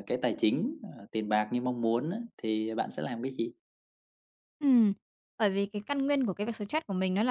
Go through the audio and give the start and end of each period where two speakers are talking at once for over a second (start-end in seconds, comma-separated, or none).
none